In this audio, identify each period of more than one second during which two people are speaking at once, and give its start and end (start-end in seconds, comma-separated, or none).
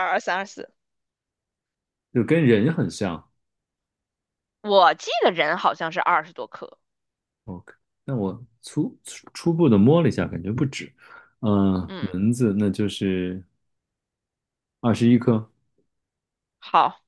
none